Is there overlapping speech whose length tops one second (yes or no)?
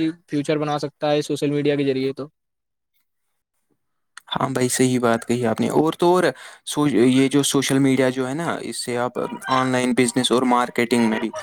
no